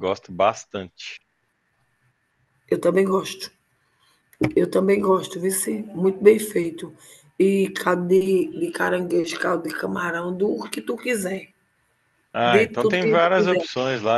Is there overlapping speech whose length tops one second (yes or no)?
yes